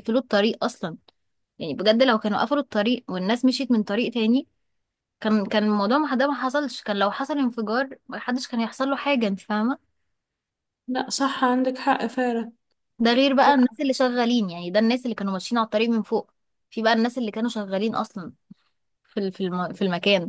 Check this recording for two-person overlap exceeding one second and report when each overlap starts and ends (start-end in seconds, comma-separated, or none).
none